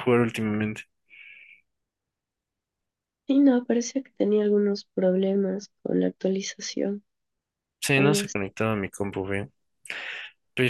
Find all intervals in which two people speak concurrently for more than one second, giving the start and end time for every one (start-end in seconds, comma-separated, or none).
none